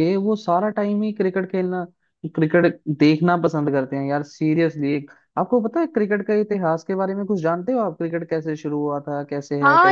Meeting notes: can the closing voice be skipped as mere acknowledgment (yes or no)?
no